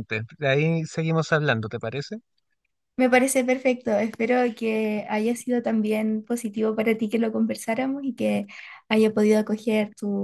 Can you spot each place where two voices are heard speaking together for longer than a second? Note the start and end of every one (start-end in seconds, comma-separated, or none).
none